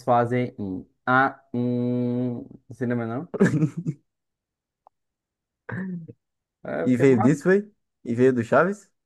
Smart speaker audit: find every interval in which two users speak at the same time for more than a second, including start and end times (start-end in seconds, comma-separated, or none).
none